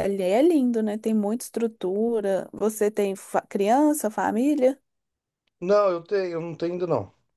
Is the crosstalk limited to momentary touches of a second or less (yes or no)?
yes